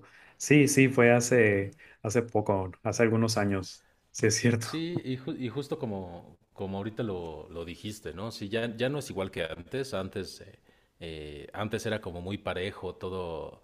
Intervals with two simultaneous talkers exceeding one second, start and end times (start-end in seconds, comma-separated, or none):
none